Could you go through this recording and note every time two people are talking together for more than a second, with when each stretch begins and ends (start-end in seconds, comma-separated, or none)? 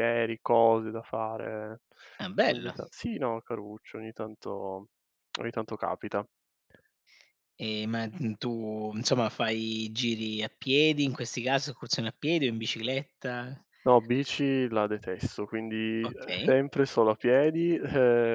none